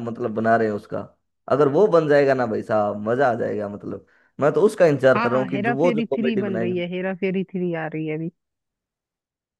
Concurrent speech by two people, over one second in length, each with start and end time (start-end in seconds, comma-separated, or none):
5.2-6.8